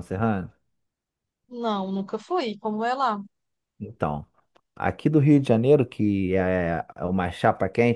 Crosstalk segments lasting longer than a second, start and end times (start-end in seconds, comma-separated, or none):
none